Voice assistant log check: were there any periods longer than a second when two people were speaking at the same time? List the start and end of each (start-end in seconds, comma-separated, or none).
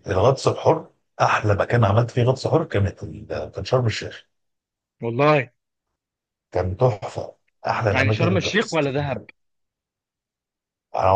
7.9-9.2